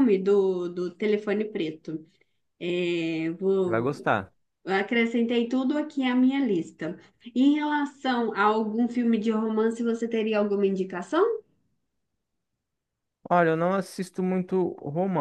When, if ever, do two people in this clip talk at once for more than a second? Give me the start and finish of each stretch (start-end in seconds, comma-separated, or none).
none